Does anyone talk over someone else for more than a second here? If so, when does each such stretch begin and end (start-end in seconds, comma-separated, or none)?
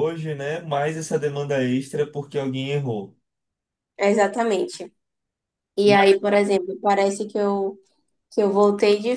none